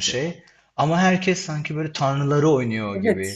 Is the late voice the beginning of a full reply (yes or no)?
yes